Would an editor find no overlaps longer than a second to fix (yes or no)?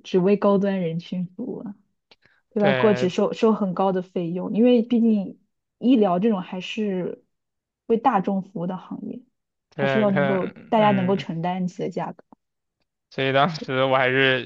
no